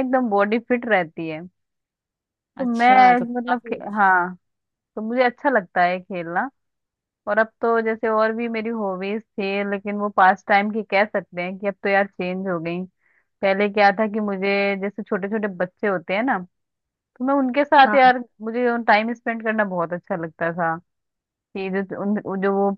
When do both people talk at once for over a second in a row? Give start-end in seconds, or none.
2.6-4.0